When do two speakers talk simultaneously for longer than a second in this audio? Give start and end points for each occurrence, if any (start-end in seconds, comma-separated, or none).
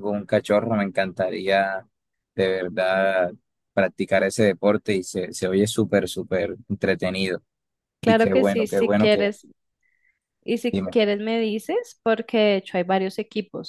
8.0-9.3